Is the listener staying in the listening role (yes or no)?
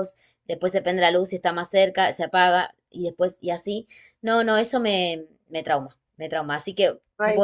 yes